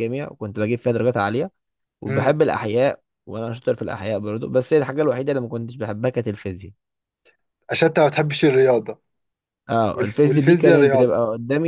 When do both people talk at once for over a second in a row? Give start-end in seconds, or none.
9.9-11.2